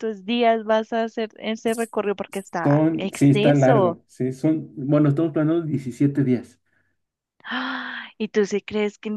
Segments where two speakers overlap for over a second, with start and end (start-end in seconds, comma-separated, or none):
2.6-4.0